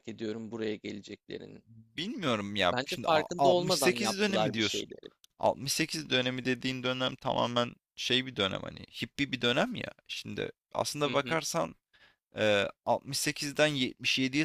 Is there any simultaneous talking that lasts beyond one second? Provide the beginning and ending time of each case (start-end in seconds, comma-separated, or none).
2.7-4.9